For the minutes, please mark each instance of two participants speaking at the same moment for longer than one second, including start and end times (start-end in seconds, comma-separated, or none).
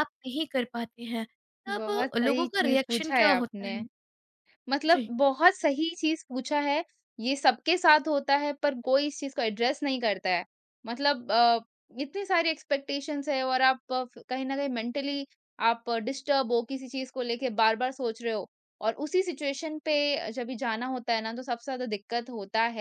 1.8-3.8